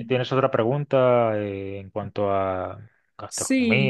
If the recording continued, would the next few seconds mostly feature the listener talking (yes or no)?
yes